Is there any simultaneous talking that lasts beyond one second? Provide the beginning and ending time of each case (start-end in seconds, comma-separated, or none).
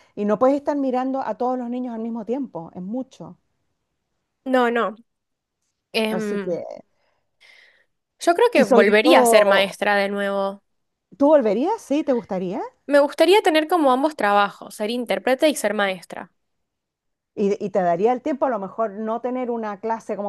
8.6-9.8